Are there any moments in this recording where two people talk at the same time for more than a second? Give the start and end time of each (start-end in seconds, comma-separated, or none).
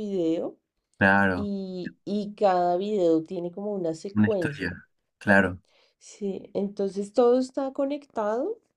none